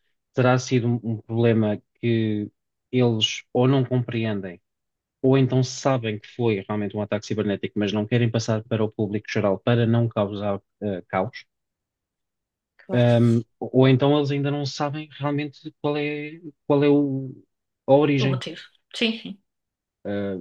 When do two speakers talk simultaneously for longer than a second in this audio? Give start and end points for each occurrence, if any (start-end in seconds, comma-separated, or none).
none